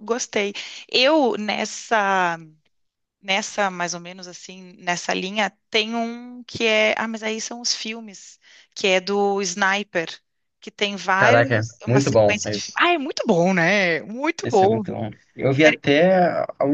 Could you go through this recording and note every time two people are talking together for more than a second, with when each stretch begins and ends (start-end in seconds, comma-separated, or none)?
11.2-12.4